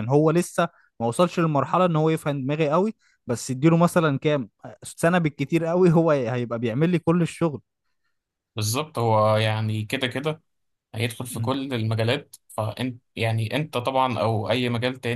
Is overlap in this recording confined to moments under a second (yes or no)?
yes